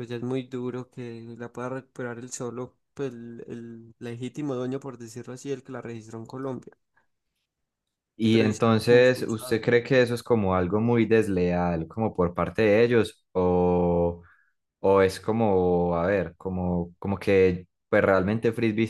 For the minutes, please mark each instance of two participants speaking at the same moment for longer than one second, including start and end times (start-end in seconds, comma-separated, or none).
8.3-9.6